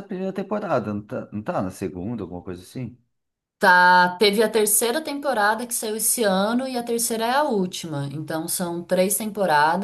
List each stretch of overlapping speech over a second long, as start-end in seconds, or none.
none